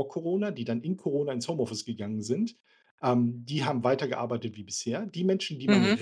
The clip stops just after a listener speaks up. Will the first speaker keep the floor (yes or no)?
yes